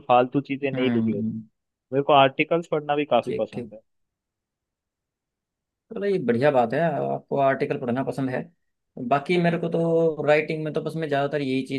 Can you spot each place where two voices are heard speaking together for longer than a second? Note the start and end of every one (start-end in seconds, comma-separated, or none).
none